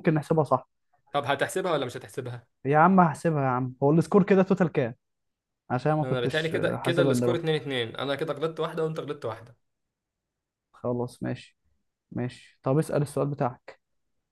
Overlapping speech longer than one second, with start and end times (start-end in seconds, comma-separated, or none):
6.0-7.5